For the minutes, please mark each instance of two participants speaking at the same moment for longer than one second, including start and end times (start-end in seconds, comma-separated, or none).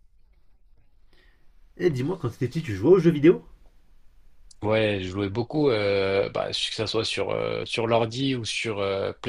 none